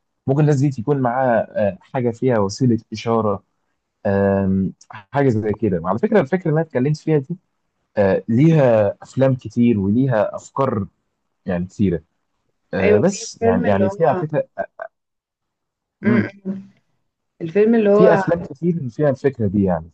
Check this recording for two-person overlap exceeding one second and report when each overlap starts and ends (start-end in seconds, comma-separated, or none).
12.8-14.2